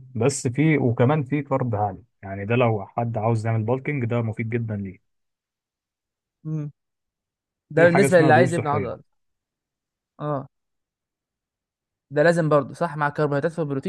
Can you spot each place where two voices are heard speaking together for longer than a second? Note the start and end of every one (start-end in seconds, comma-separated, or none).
7.8-9.0